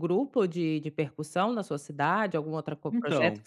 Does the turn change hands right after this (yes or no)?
no